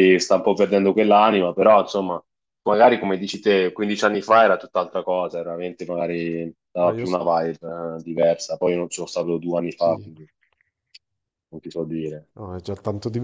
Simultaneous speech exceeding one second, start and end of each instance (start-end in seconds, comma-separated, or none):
none